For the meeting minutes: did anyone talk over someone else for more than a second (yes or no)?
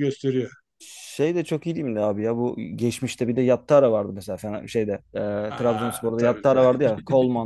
yes